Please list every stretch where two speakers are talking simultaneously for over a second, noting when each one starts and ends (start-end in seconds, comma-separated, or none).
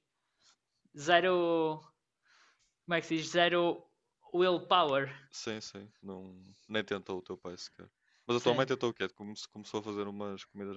none